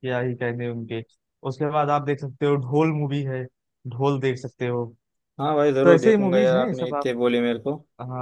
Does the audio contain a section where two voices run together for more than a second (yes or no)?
yes